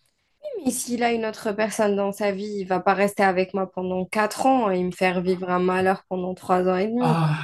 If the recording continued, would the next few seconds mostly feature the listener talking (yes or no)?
yes